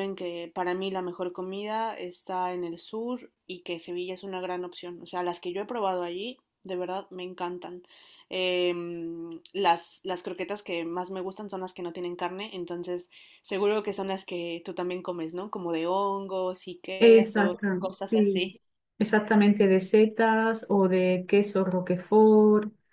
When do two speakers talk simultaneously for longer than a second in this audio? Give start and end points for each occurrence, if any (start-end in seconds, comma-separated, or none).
17.0-18.5